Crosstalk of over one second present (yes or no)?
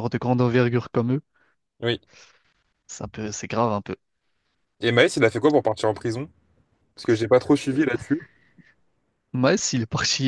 no